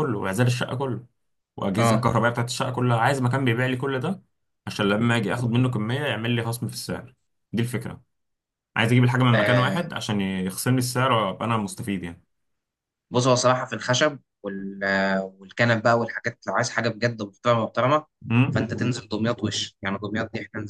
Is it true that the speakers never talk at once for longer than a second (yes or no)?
yes